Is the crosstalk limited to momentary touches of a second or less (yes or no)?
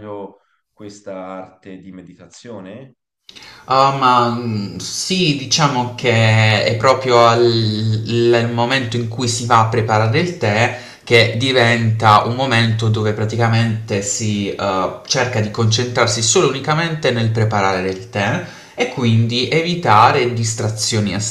yes